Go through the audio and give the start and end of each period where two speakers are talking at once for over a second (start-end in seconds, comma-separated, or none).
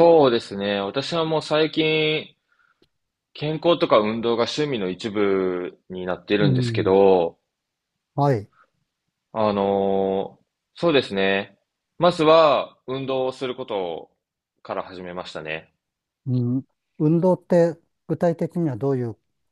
none